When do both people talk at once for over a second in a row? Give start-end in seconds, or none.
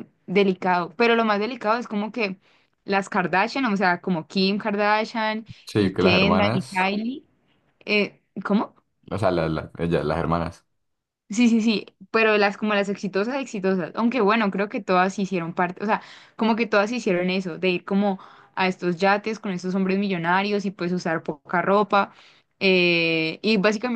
5.7-6.9